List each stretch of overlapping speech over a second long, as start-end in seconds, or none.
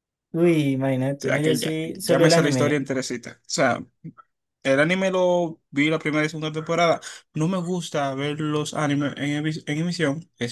1.2-2.8